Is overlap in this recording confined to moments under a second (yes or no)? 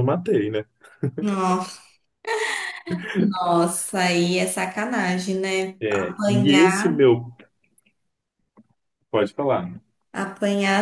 no